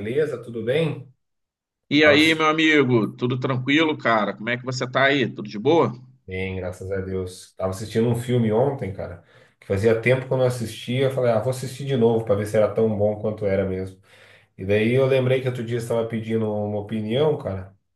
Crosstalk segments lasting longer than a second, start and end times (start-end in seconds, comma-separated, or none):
none